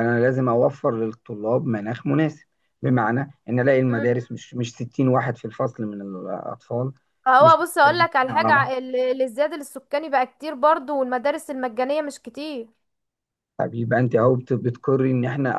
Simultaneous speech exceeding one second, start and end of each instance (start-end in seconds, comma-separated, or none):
7.4-8.7